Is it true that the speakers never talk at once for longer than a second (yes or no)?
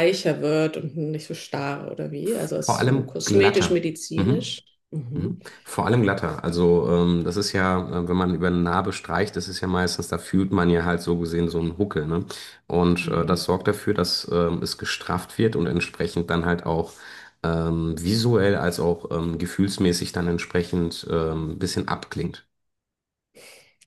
no